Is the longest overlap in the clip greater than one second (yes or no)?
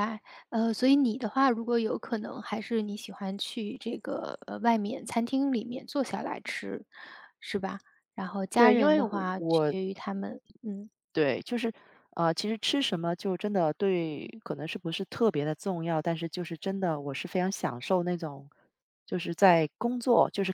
yes